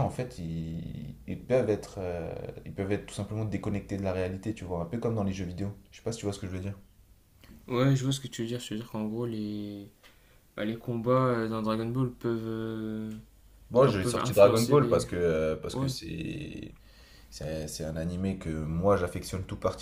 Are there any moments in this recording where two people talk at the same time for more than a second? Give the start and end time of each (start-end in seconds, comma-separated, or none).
13.8-15.0